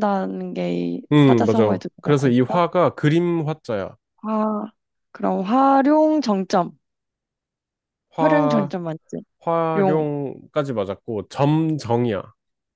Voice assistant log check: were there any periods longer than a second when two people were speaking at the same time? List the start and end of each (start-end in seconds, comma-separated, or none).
1.1-2.6